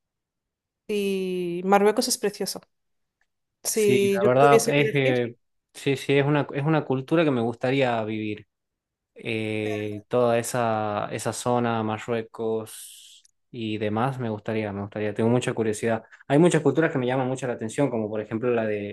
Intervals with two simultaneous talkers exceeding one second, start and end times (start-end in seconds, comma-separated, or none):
3.7-5.2